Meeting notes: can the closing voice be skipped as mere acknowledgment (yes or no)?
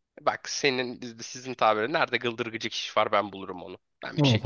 no